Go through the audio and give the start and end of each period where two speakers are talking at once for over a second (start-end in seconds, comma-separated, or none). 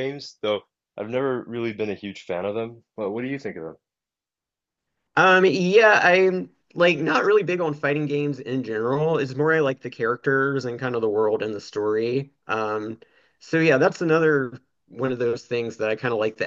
none